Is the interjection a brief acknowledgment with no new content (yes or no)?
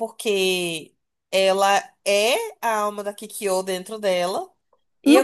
no